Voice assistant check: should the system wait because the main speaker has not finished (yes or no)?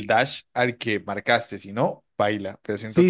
no